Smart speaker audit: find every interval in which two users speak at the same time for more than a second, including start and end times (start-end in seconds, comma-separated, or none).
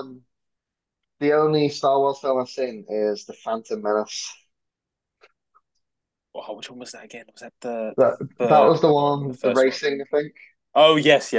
8.0-9.8